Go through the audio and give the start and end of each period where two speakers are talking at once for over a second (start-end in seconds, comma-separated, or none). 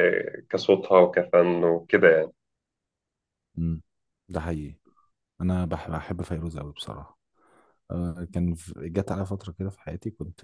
none